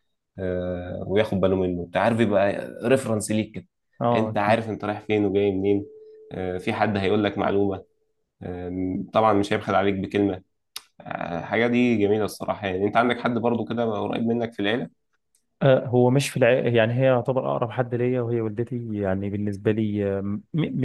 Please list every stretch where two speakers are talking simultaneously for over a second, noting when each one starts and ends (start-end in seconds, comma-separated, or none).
none